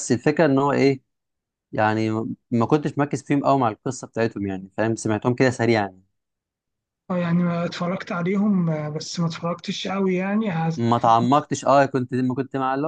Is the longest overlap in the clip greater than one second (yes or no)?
no